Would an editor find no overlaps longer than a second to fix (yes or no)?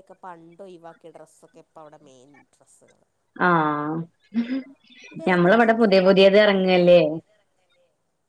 no